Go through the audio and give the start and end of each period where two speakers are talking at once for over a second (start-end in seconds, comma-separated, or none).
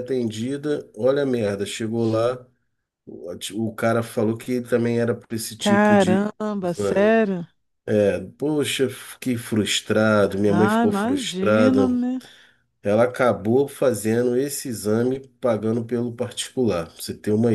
5.6-7.2, 10.5-12.0